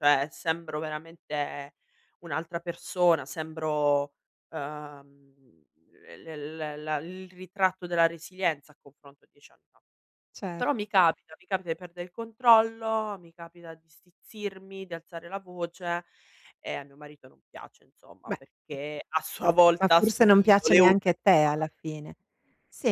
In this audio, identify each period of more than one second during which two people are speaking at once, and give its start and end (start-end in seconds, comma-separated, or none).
19.8-21.5